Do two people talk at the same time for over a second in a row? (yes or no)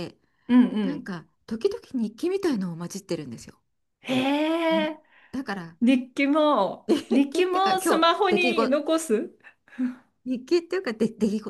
yes